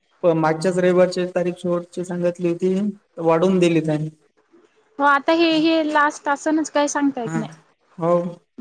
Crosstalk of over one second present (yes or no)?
no